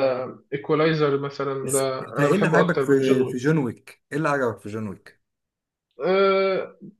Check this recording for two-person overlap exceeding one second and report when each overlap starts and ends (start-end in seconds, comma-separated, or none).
1.6-3.4